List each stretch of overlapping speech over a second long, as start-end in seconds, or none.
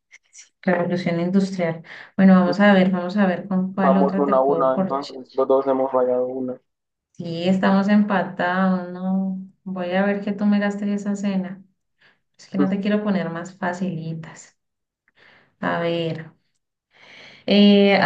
3.8-5.2